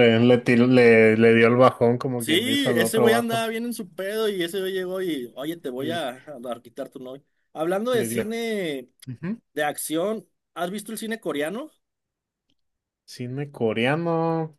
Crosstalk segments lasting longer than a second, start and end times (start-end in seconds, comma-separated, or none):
2.2-3.5